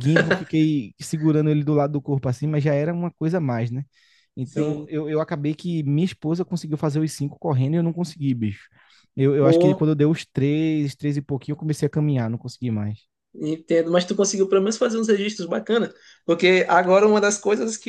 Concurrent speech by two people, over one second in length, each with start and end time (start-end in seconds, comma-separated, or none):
none